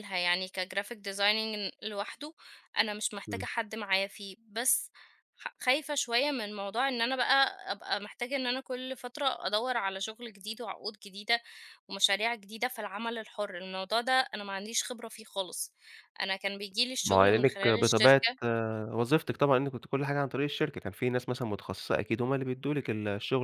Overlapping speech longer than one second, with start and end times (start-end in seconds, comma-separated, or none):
17.0-18.3